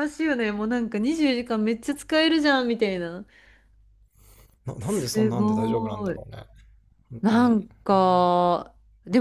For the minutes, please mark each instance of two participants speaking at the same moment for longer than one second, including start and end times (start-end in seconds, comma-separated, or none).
4.8-6.2